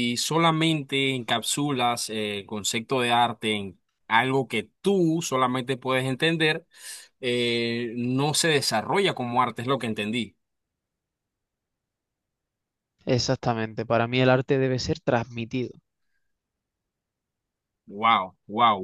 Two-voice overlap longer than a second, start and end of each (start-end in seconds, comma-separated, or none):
none